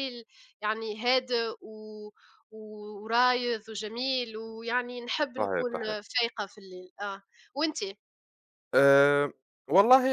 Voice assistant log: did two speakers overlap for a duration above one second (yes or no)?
no